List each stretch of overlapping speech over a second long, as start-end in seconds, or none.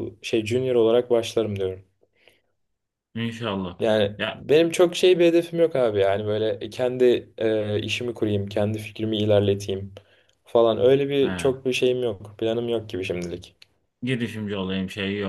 none